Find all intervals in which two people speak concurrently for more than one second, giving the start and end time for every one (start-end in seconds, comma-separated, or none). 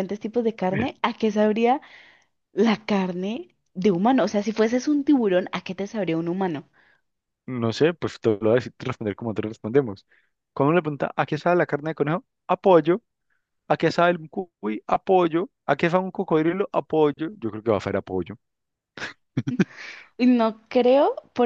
none